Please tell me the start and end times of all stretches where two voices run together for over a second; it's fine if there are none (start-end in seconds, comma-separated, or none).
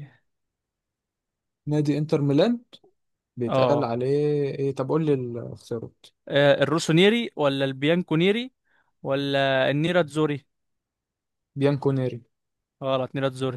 none